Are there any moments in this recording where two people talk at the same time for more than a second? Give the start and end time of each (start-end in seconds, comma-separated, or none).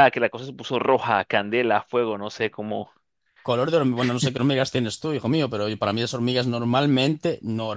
none